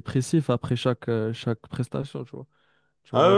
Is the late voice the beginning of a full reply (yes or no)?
yes